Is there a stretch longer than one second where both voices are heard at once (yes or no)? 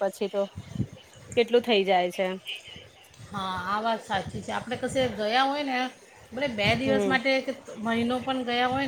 no